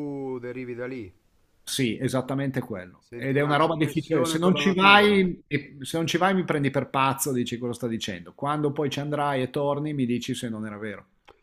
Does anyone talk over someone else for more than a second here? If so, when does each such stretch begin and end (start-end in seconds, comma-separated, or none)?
3.0-5.1